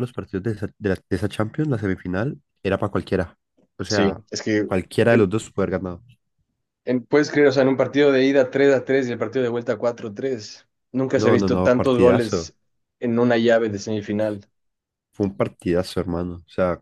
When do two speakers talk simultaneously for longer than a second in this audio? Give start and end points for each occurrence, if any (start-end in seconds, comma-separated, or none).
11.1-12.5